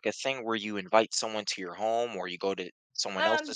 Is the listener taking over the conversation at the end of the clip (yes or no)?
yes